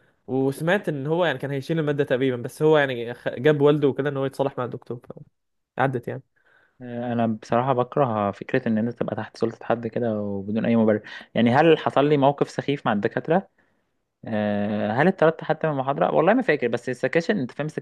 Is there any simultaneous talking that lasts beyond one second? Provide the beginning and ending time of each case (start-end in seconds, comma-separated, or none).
none